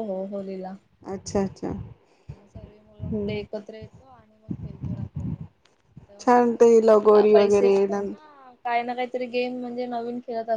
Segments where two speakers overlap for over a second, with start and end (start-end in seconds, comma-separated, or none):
6.2-7.7